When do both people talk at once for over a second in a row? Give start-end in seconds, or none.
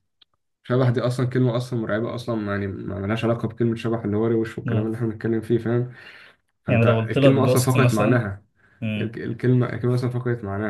6.7-8.3